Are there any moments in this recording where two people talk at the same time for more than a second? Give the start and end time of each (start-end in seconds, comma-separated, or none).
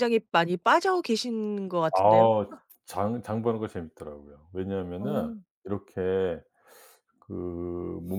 none